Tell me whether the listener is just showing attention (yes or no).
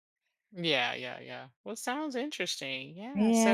no